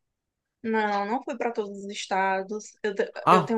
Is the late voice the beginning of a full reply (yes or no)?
yes